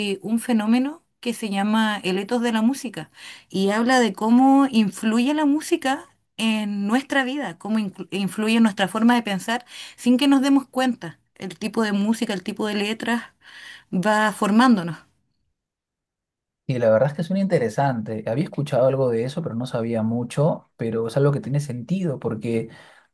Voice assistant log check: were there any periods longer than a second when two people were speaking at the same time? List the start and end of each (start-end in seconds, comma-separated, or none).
none